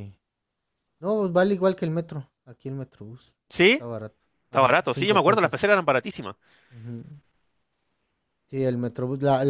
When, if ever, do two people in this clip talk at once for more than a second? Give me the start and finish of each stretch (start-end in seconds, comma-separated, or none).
4.5-5.7